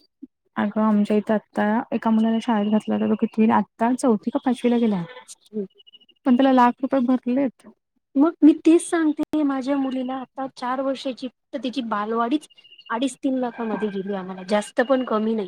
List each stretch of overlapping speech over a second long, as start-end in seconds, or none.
none